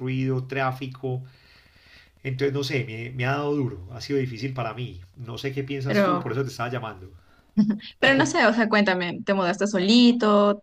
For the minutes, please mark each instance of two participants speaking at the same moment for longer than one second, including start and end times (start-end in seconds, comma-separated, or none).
none